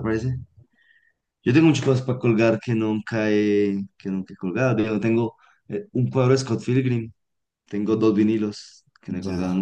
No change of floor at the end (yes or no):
no